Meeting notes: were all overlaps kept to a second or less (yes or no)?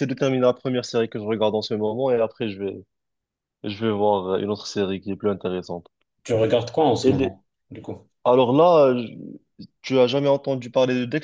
yes